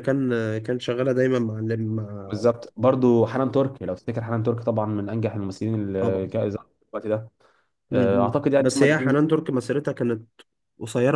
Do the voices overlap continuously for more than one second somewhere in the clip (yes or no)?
yes